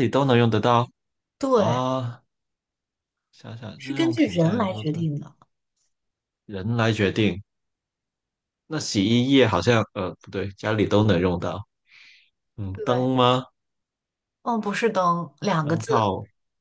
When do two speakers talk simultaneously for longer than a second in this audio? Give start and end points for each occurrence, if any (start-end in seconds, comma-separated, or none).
3.8-5.1